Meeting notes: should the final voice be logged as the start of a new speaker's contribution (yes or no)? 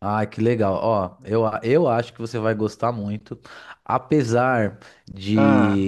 no